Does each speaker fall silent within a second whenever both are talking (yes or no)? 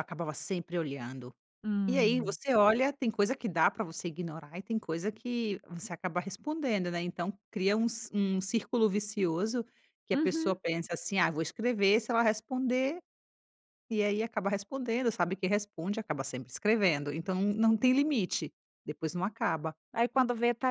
yes